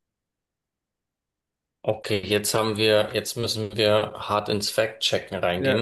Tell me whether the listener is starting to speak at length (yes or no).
yes